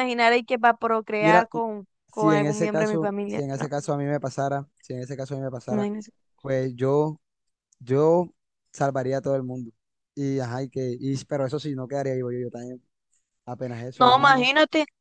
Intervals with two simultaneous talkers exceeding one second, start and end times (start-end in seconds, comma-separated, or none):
2.1-3.6